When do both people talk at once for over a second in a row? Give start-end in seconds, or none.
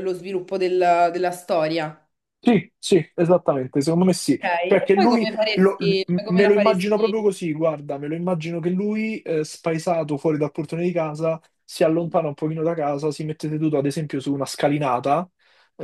4.4-7.3